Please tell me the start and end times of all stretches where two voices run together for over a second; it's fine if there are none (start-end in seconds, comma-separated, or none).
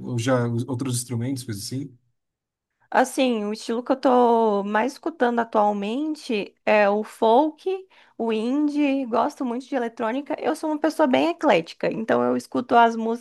none